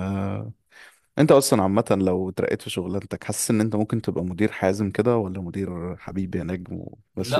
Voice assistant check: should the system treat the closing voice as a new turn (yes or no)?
yes